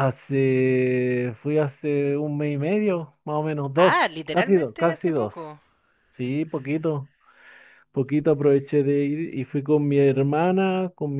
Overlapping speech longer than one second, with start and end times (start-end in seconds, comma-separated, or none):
3.8-5.3